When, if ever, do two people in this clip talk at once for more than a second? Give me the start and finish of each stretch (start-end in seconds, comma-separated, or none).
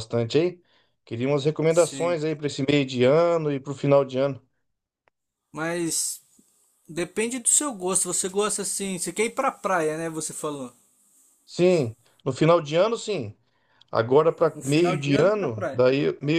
14.5-15.9